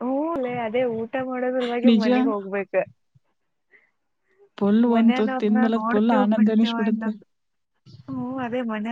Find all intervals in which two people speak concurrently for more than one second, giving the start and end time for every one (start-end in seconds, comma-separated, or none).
4.9-7.1